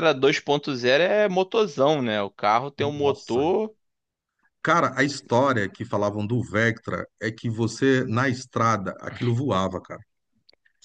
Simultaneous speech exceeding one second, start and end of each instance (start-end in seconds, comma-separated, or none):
none